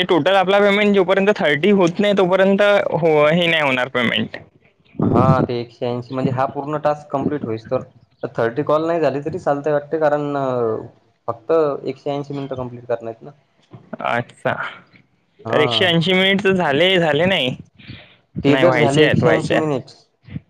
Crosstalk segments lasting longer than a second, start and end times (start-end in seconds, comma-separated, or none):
18.5-19.8